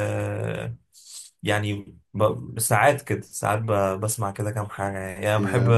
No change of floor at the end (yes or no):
yes